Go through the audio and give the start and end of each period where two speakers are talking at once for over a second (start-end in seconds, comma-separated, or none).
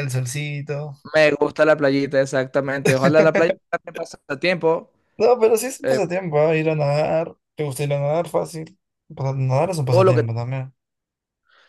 none